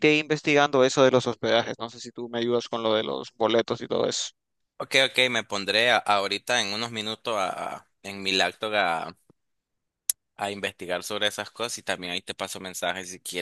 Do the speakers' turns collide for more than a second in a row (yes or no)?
no